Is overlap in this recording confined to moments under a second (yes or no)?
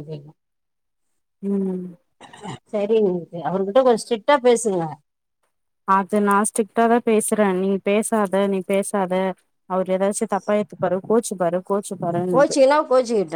yes